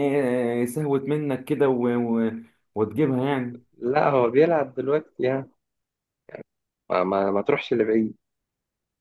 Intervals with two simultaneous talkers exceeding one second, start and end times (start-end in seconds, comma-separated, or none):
none